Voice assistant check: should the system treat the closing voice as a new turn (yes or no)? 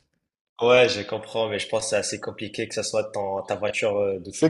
yes